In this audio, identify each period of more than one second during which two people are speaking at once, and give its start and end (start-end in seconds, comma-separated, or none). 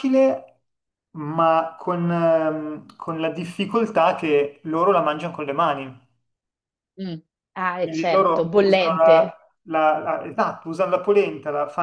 7.8-9.4